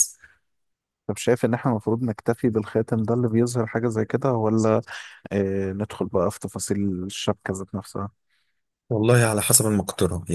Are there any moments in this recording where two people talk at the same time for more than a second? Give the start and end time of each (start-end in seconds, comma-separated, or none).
none